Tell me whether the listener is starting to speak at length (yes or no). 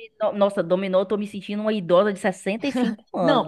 yes